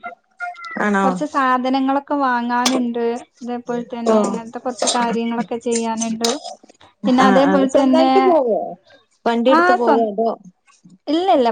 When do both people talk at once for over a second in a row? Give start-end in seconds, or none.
none